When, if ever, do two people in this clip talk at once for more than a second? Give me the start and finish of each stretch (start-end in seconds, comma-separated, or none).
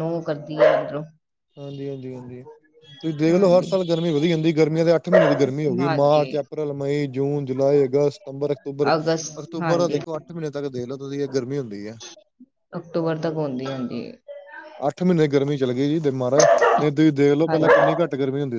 none